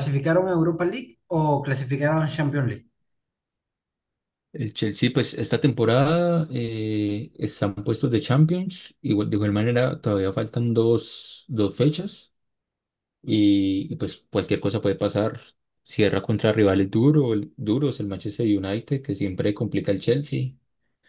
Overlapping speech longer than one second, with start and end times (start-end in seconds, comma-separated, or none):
none